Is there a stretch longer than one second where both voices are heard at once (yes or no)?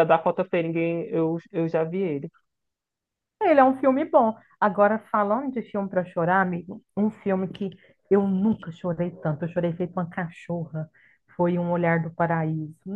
no